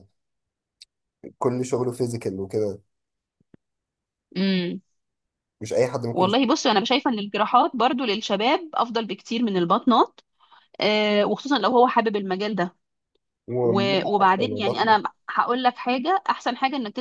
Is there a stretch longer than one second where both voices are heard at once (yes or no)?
yes